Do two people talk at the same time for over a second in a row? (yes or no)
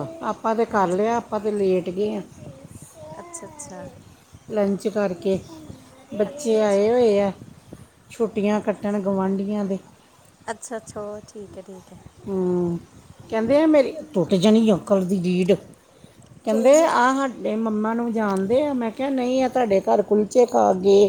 no